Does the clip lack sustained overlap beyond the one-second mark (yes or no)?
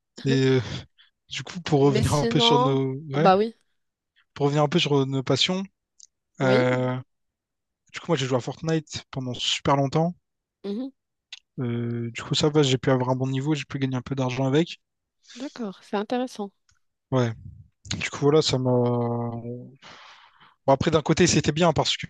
no